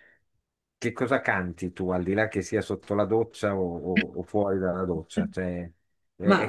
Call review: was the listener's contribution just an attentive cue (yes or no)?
yes